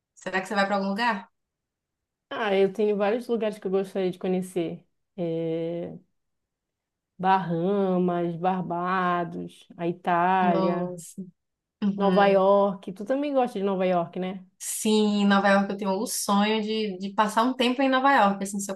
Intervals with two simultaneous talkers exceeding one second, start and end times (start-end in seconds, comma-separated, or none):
none